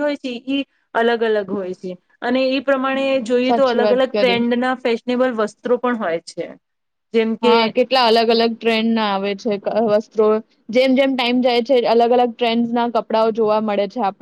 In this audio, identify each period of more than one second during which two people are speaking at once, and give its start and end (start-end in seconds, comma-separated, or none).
2.8-4.4